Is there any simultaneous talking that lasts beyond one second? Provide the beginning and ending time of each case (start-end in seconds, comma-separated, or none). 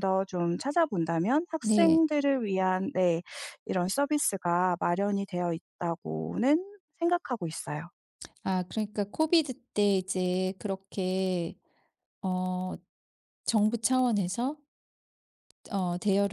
none